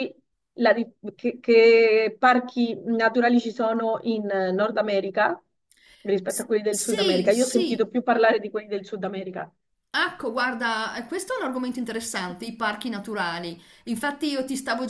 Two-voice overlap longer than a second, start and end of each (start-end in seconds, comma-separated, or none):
6.3-7.9